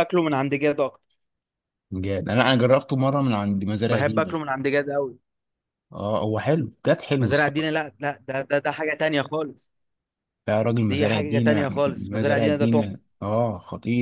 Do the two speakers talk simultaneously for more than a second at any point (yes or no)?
yes